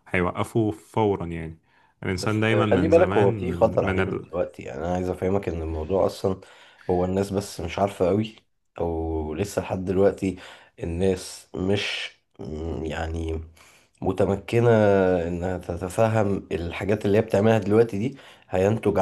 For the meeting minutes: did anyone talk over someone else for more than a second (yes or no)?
yes